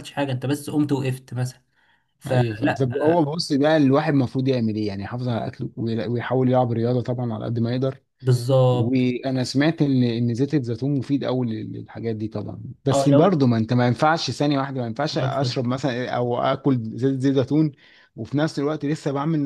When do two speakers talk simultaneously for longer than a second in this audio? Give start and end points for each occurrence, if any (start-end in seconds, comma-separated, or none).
none